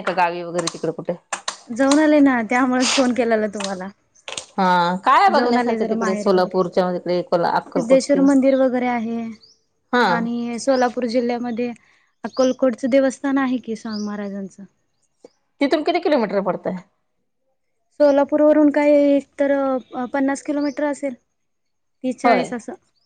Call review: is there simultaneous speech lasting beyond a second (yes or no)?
yes